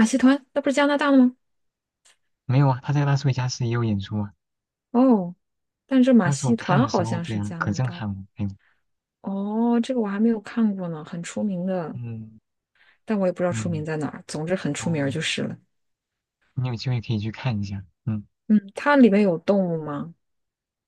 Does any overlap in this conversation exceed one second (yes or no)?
yes